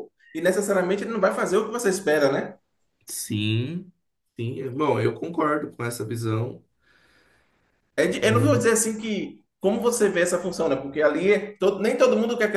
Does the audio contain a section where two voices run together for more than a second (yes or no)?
no